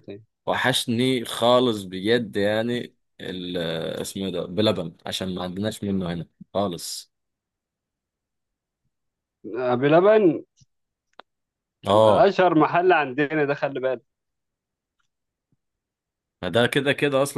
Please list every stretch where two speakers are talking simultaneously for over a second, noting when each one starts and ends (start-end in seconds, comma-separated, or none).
none